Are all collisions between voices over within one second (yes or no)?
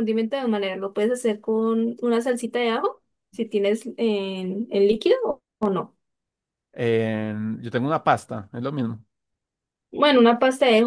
yes